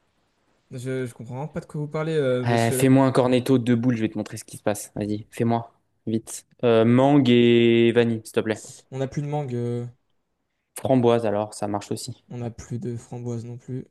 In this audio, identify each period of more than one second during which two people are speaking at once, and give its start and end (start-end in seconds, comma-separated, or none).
none